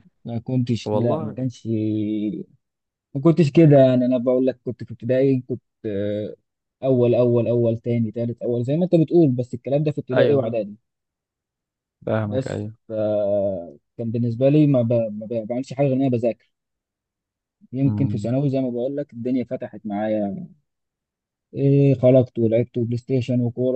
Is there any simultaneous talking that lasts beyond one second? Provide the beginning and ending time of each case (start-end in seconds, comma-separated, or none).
none